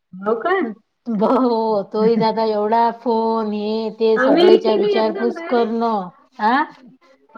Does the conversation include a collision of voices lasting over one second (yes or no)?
yes